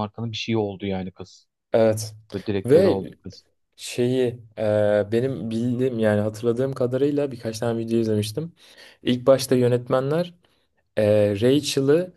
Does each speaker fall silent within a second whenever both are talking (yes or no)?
yes